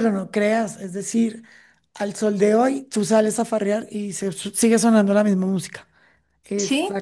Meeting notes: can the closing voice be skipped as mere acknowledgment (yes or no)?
yes